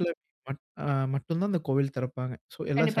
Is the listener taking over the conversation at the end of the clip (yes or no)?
yes